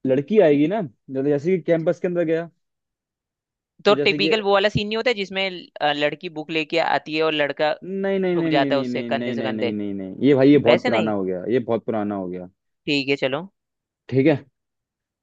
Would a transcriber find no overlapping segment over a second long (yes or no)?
no